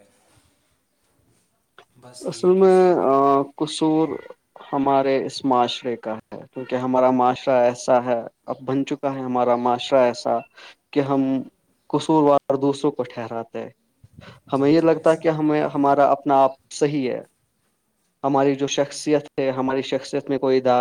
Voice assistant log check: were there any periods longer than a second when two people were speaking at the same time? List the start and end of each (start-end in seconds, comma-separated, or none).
14.6-16.2